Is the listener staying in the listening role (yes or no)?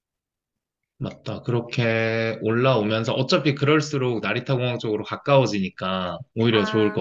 no